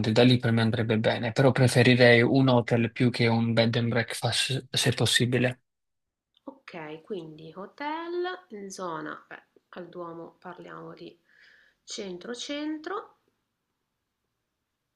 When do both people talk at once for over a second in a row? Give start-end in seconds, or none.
none